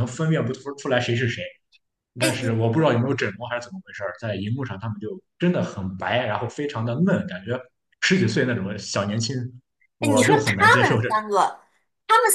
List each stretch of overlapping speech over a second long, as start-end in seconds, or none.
10.0-11.2